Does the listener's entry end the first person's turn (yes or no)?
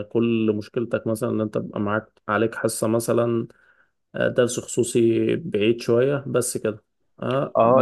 yes